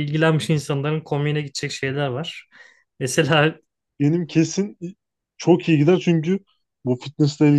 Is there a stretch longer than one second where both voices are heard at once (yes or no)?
no